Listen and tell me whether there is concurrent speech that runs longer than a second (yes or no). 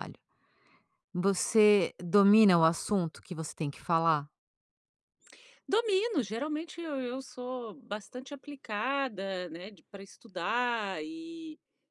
no